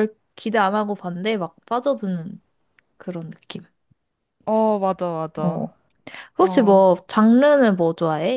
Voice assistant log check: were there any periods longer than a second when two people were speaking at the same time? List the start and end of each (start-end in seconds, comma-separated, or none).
none